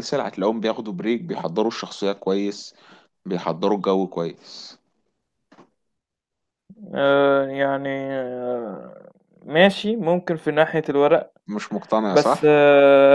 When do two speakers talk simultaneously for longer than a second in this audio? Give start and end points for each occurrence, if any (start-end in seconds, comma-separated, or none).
none